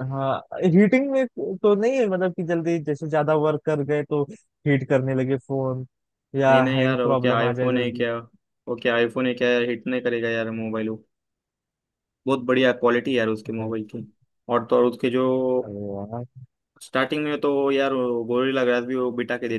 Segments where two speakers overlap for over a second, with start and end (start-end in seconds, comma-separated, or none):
6.5-8.0